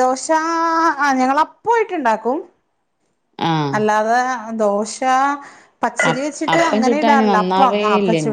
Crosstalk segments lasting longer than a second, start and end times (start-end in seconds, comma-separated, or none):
6.1-7.8